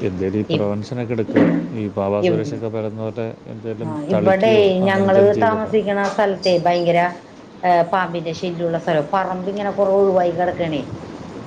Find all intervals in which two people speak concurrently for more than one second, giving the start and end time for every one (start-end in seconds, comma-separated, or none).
3.8-5.7